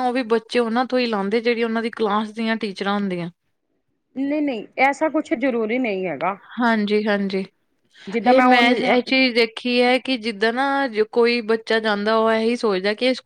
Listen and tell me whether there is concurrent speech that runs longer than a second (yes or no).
no